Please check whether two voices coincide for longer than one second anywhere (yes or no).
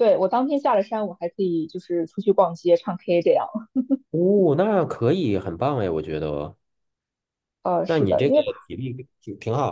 no